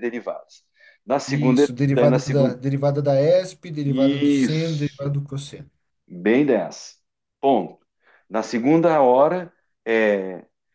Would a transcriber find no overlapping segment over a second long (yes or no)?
no